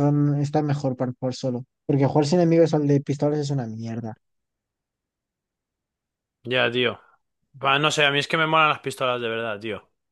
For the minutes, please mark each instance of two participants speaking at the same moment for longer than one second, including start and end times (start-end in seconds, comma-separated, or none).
none